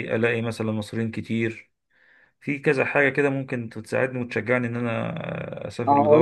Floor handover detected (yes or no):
yes